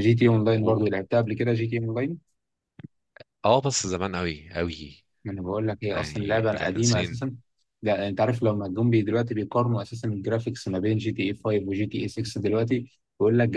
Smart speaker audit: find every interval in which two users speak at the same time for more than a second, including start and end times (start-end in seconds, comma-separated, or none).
5.9-7.2